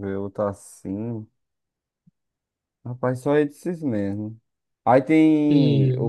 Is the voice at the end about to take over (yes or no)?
no